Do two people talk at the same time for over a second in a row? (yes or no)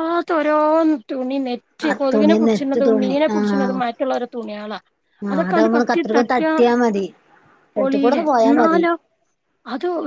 yes